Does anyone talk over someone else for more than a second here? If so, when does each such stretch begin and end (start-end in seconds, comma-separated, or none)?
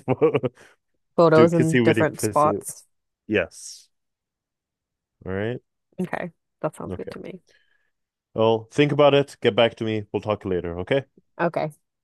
1.3-2.5